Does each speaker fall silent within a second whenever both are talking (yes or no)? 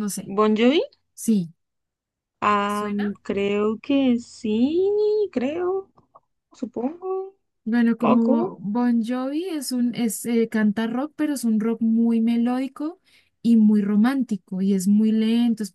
yes